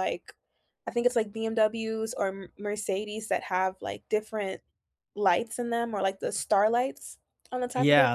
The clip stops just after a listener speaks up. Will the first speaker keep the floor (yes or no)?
no